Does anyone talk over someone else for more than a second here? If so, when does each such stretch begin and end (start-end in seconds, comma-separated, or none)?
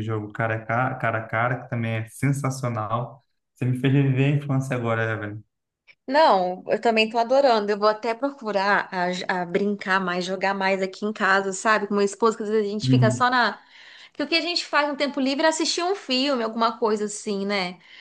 none